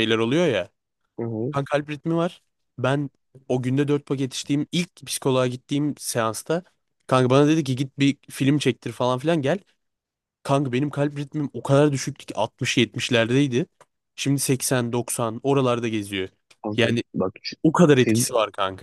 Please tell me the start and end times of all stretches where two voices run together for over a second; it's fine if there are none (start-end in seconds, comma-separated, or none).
none